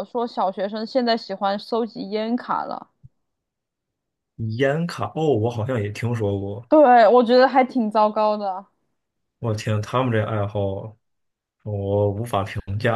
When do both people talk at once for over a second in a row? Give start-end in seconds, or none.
none